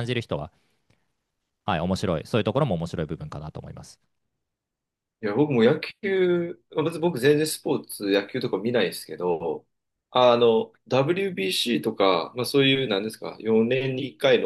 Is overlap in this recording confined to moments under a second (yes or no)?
yes